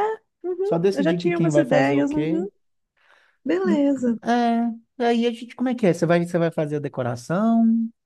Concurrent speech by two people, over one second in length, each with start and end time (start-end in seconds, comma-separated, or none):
0.6-2.5